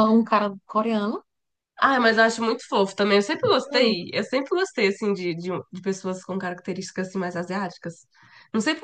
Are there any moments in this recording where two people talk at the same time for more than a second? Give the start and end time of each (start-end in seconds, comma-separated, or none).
none